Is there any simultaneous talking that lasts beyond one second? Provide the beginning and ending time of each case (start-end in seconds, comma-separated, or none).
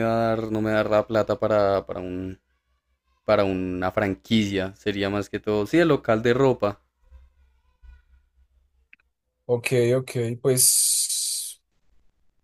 none